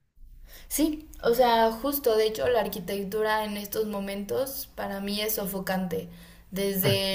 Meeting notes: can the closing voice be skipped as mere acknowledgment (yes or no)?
yes